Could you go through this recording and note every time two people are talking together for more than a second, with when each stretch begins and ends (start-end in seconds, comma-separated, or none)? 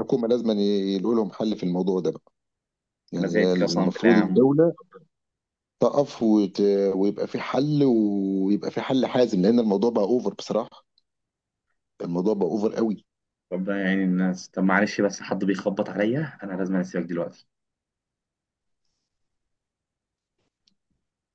3.2-4.5